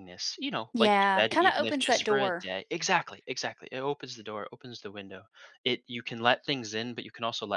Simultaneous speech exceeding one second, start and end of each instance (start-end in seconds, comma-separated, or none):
0.7-2.5